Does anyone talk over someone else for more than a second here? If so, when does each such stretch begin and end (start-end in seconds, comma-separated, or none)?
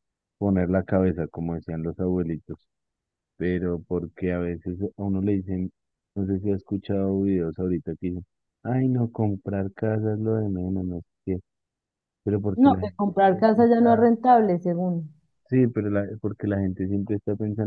12.6-14.1